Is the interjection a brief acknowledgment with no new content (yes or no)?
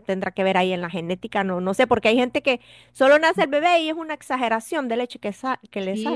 no